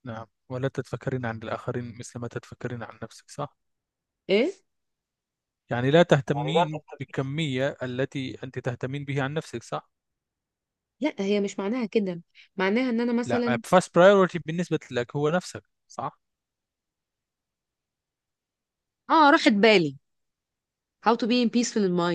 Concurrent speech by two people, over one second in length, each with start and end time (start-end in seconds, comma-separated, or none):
none